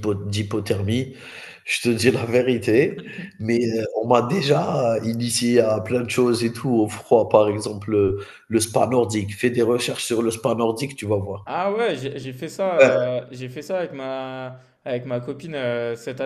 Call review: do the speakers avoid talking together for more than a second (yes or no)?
yes